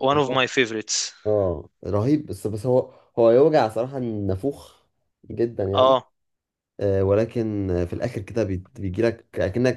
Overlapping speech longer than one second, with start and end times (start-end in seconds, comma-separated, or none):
none